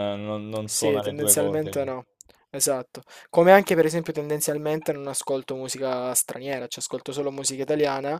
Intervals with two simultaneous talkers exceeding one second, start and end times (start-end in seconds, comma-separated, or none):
0.7-1.9